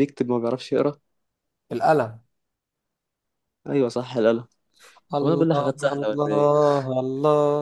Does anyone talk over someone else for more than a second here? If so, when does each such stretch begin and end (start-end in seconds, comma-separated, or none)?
5.2-6.5